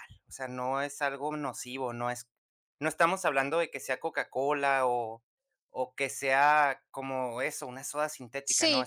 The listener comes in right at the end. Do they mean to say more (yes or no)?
yes